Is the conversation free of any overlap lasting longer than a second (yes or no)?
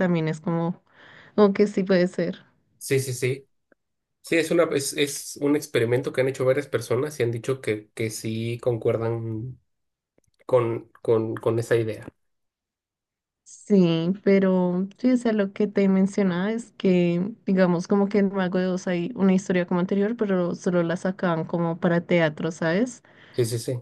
yes